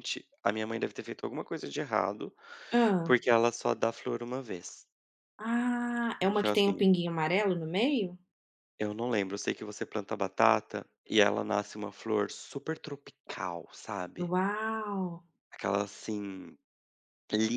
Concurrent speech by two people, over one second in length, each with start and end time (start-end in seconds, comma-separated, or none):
none